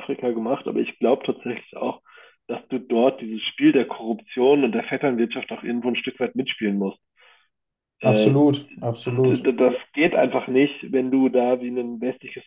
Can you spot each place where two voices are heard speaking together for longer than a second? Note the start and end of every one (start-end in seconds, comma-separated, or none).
none